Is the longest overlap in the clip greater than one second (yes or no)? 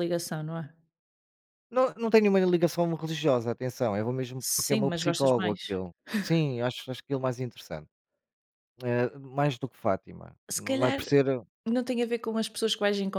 yes